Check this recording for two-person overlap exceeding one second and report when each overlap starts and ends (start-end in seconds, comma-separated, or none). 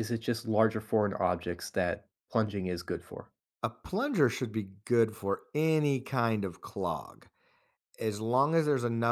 none